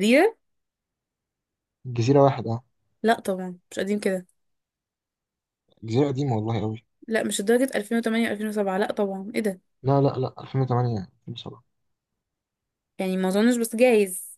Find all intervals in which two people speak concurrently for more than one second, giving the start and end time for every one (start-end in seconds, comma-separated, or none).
none